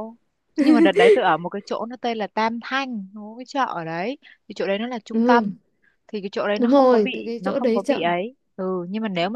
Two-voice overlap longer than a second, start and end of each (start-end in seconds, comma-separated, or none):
6.6-8.1